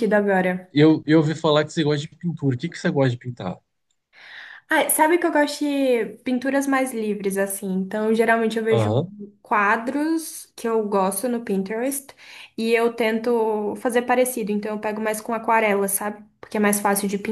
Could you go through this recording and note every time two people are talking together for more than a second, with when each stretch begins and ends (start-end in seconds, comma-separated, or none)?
none